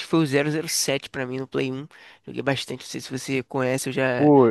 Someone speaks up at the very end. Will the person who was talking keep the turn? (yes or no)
no